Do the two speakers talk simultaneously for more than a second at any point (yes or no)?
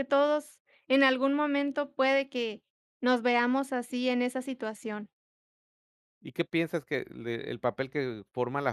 no